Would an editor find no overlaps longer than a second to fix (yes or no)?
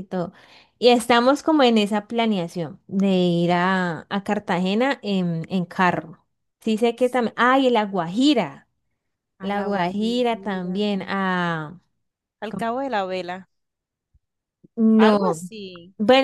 no